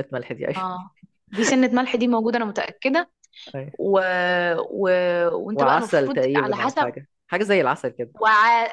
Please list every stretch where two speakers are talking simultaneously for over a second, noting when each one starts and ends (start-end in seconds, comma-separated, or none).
5.5-6.9